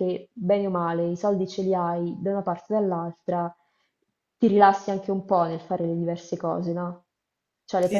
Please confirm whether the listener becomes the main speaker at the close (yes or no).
yes